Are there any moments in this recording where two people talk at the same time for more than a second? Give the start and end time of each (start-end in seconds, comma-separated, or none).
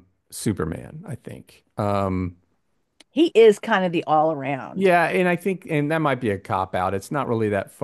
none